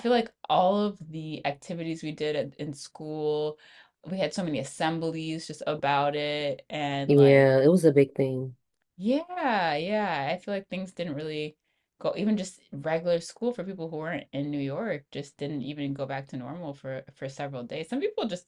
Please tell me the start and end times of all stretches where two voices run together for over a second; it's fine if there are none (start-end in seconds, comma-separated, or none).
none